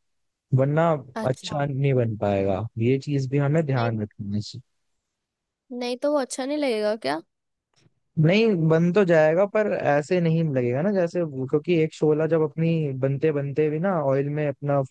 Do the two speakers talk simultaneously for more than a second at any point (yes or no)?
no